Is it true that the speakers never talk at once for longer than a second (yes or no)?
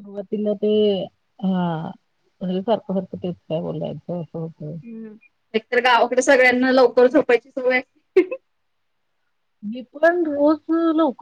yes